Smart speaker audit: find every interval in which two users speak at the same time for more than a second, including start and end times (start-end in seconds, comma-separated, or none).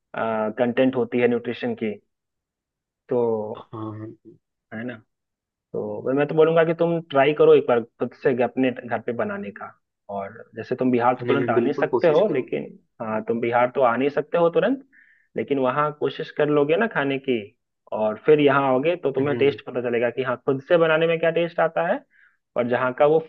11.2-12.6